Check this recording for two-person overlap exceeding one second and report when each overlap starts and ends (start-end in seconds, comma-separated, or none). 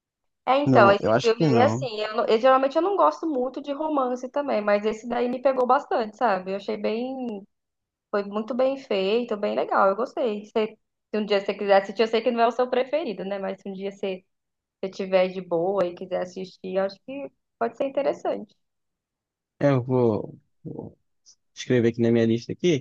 0.7-1.9